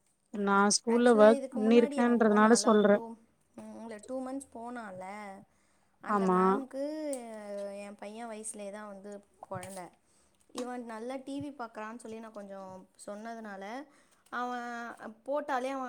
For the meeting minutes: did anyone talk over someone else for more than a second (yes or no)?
yes